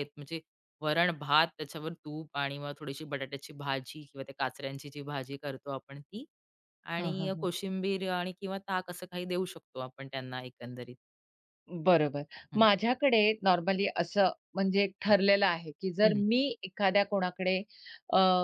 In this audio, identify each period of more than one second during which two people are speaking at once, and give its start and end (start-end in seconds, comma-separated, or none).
none